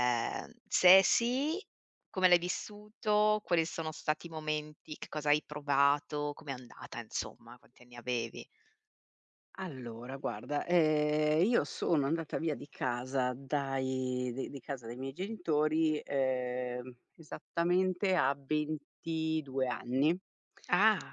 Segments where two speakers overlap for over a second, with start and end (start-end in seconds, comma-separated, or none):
none